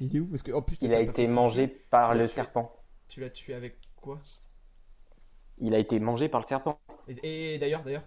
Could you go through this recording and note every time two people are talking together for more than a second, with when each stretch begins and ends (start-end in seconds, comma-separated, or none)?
0.8-2.5